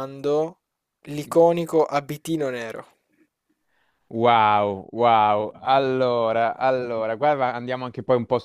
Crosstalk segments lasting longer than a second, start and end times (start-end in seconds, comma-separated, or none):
none